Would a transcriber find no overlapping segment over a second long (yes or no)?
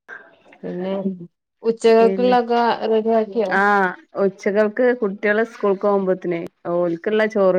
yes